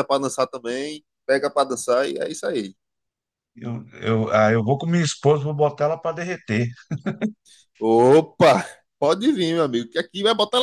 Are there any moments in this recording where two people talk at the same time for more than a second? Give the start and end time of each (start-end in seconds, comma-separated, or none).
none